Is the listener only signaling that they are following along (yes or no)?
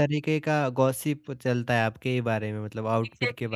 no